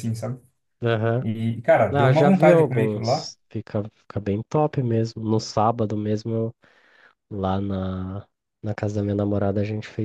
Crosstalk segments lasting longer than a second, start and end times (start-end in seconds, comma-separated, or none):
1.9-3.3